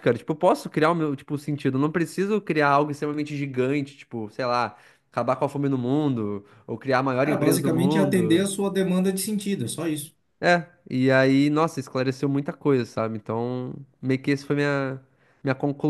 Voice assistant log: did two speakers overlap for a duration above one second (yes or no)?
yes